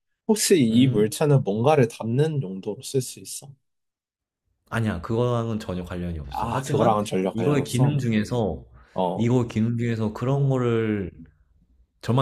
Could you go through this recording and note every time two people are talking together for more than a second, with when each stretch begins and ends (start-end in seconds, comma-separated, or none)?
6.3-8.0